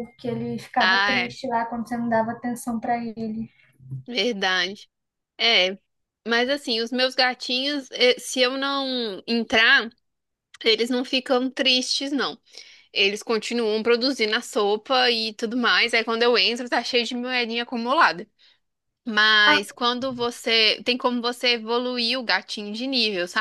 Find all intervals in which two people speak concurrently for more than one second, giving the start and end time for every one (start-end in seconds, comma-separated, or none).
none